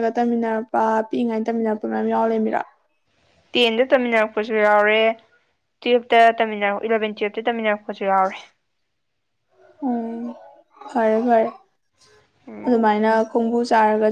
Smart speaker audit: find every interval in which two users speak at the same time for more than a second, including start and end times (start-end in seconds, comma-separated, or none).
none